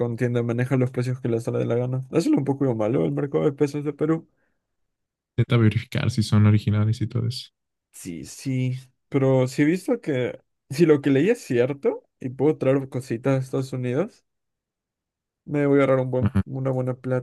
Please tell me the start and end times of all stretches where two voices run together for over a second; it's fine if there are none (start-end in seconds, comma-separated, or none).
none